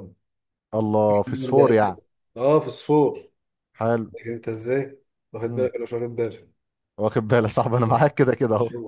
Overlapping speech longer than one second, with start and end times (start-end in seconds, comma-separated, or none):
none